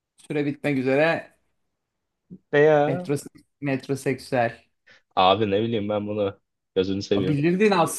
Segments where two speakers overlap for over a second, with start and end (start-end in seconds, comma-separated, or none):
none